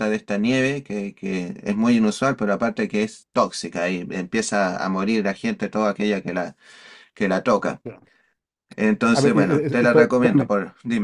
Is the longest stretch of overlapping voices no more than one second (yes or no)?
no